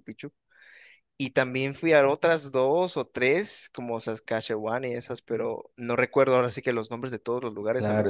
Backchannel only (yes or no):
no